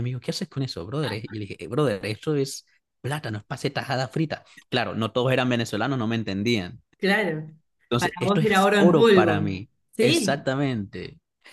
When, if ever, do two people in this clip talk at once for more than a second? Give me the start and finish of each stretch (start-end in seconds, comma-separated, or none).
8.0-9.3